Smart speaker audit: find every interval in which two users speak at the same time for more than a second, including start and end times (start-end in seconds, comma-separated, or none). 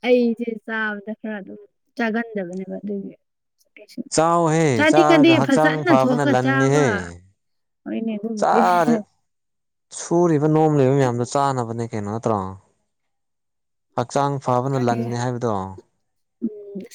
4.8-6.8